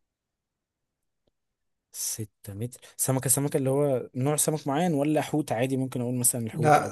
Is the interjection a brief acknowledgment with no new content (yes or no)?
no